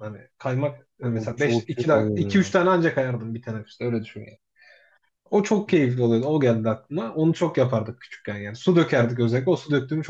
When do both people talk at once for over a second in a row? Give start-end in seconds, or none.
1.0-2.5